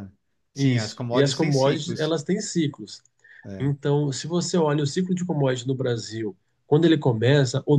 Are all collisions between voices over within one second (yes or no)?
no